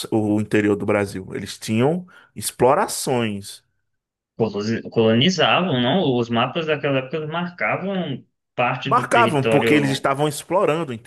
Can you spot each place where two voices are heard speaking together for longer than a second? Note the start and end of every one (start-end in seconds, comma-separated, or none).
8.8-10.1